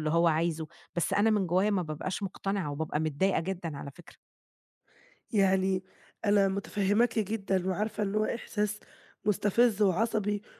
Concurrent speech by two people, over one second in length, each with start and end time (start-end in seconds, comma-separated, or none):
none